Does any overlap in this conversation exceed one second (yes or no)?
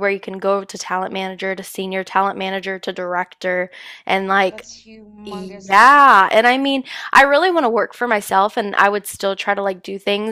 yes